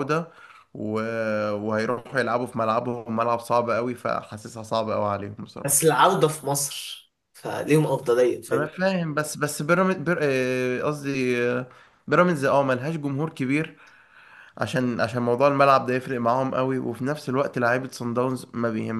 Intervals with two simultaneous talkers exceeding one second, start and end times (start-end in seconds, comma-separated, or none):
none